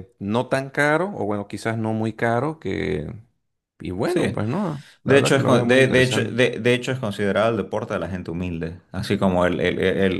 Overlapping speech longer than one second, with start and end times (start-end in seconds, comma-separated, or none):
5.0-6.4